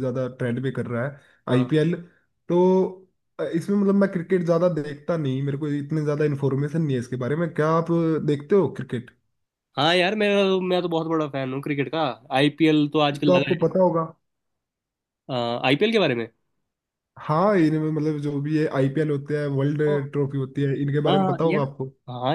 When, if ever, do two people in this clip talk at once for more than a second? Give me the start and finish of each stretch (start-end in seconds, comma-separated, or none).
none